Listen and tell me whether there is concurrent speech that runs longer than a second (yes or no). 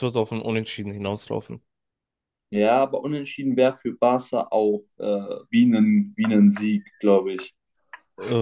no